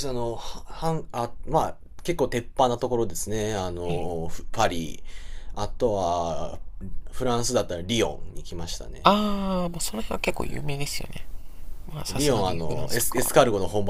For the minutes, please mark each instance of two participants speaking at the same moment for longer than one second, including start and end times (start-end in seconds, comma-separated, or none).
12.1-13.3